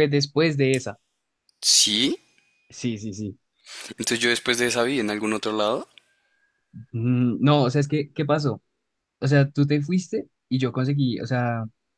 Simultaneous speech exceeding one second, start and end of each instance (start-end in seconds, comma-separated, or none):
none